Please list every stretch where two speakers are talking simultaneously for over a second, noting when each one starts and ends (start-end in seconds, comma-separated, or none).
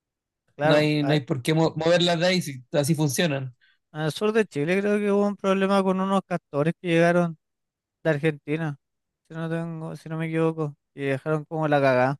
none